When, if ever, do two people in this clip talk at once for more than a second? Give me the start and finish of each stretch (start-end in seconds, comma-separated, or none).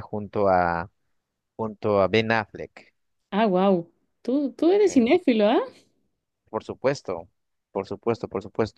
none